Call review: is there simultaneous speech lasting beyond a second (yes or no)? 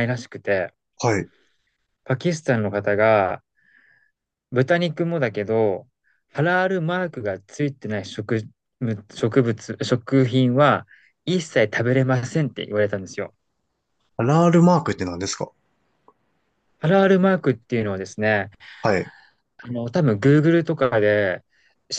no